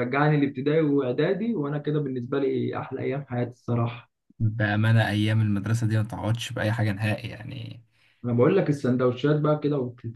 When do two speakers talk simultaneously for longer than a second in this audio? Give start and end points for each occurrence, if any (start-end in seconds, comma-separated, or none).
none